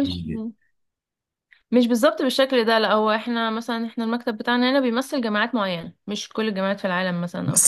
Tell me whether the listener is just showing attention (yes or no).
no